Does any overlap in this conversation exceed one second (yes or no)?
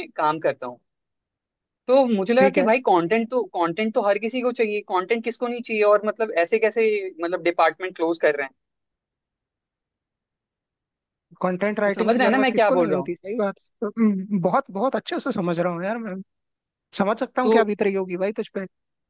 yes